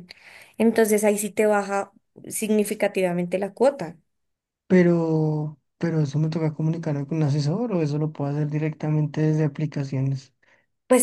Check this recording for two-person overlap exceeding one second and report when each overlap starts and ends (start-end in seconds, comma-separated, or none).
none